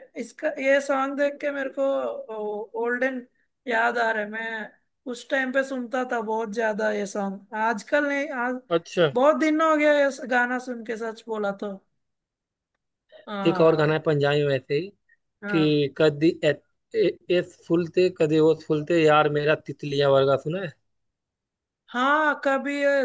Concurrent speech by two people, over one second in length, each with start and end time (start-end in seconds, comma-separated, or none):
none